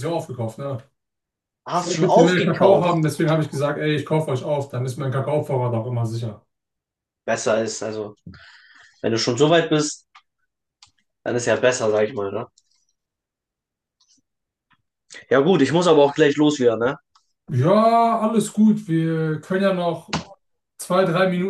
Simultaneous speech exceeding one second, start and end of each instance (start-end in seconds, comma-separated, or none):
1.7-3.1